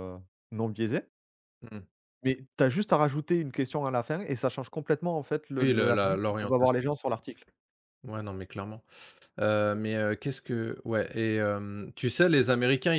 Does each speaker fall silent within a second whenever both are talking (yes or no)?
no